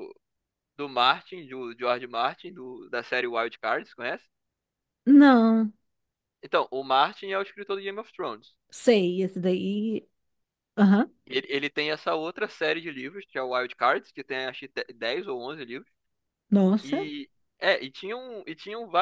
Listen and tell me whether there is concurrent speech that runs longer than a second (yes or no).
no